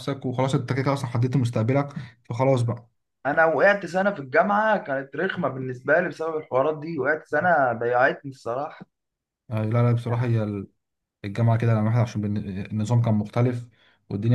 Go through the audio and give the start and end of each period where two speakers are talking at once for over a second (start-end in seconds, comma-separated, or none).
none